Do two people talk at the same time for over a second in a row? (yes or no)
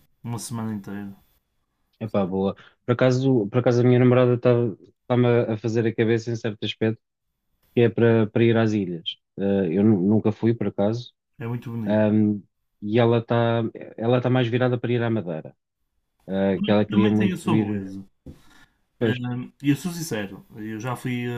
yes